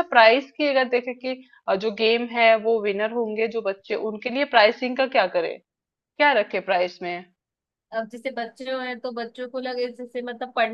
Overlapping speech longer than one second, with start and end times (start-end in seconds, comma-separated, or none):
none